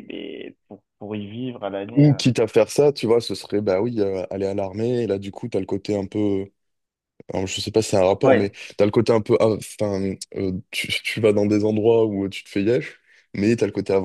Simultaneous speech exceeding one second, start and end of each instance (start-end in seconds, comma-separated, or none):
none